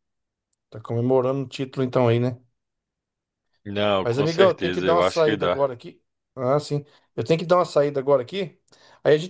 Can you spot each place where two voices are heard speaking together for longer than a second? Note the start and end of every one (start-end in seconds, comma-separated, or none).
4.0-5.6